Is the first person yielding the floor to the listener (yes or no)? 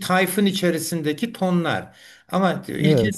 no